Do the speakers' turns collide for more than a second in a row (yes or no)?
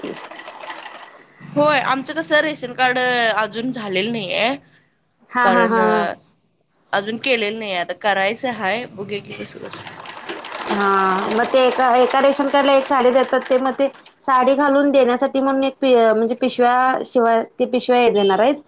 no